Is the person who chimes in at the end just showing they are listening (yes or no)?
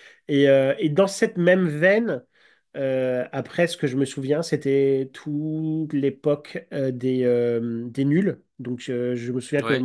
yes